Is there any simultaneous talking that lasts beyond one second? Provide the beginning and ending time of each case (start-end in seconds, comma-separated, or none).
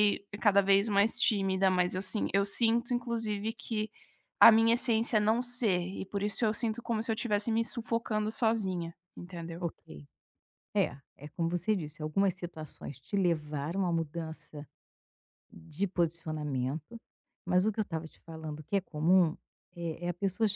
none